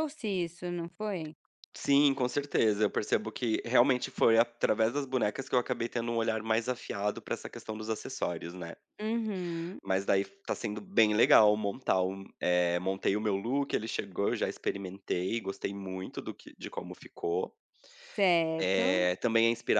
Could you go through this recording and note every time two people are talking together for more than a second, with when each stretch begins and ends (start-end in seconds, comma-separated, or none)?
none